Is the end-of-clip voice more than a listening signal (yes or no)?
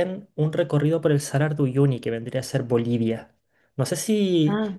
no